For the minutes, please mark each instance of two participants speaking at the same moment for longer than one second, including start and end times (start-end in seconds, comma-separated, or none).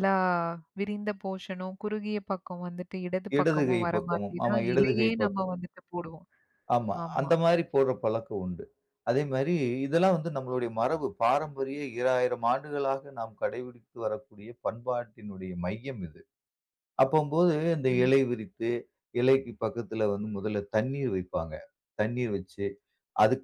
3.4-5.5